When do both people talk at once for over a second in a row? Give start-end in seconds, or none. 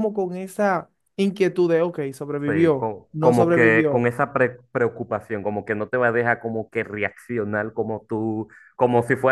2.5-4.1